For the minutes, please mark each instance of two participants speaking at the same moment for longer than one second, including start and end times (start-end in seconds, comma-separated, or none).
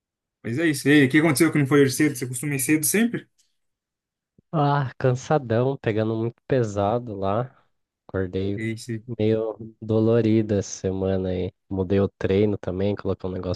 none